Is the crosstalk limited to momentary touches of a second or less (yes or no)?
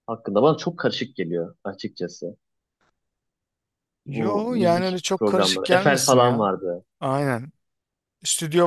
no